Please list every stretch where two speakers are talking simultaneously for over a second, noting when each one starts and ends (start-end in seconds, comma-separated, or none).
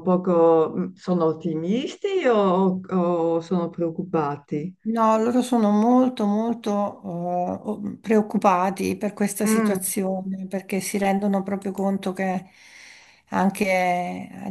none